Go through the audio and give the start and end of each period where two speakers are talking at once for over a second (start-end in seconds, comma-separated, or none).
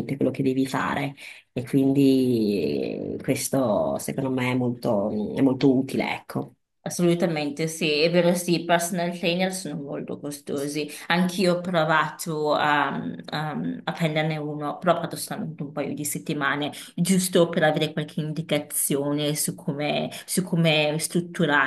none